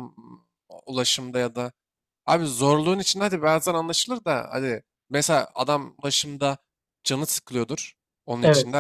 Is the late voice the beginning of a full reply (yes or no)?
no